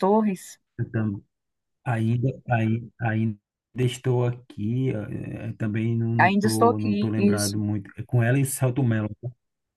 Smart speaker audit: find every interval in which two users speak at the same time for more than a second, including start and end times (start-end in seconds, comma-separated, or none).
6.2-7.6